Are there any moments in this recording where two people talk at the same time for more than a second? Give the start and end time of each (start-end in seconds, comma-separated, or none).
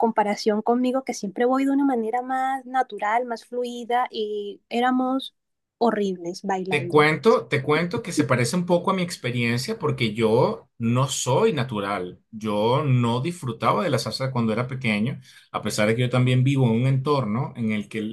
none